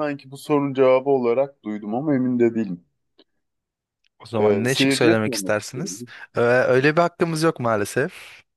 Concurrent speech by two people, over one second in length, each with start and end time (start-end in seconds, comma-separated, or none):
4.4-6.0